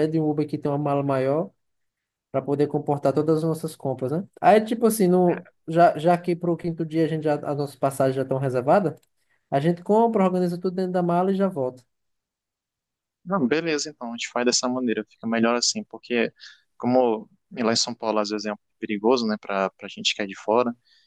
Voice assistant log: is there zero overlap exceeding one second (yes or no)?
yes